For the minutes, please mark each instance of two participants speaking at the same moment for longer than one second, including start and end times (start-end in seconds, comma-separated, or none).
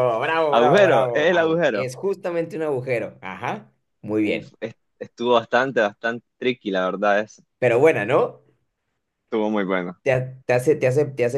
0.5-1.9